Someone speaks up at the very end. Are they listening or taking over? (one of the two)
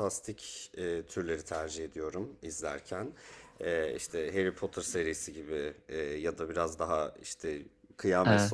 listening